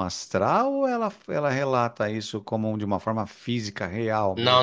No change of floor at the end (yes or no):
no